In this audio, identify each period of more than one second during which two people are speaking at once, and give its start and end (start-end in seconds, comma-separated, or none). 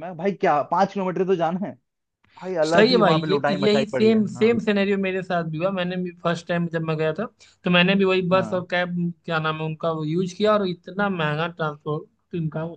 2.7-4.6